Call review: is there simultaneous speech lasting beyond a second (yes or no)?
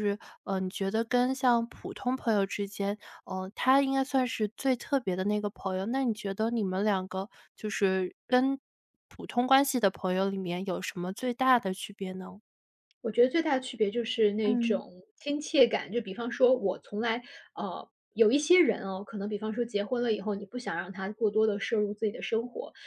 no